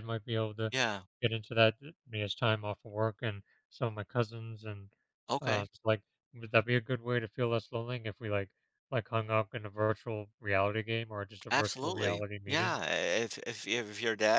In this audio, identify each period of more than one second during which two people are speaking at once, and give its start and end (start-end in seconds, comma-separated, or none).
11.5-12.8